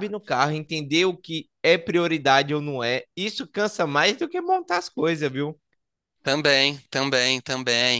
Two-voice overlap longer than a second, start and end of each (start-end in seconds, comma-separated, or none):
none